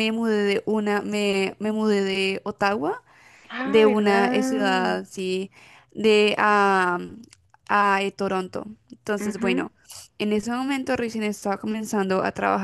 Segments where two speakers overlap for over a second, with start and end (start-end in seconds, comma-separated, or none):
3.6-5.0